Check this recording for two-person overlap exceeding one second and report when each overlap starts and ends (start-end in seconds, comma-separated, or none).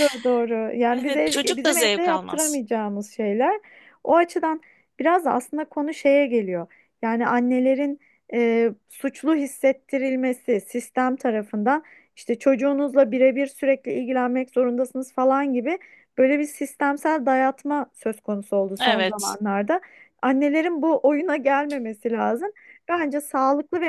1.0-2.6